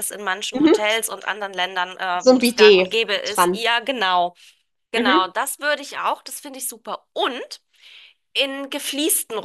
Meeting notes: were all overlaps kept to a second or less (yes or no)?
no